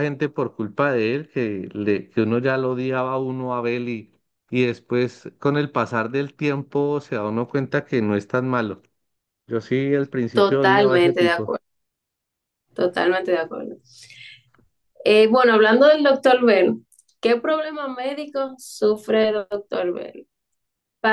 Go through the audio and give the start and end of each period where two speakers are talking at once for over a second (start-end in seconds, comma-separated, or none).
10.3-11.5